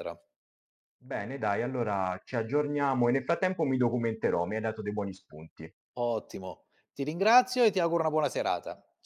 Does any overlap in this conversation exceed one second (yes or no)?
no